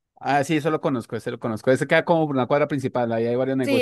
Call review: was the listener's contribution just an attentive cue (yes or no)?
no